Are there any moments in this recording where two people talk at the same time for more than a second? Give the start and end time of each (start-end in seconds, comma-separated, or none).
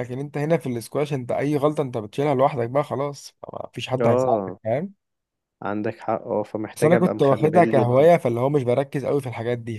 6.8-8.1